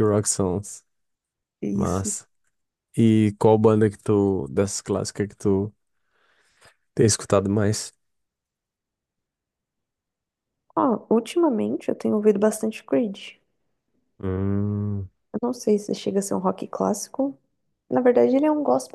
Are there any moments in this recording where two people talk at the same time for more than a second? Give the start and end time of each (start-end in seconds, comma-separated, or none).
none